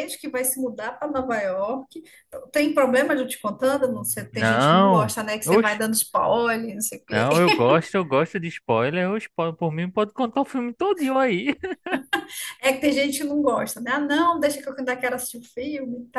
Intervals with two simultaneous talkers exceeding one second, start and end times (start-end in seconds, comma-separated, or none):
4.3-5.8